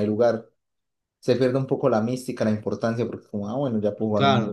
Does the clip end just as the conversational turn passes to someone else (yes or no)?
yes